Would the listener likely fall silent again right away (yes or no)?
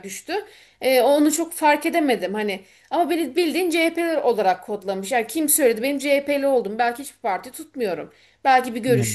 yes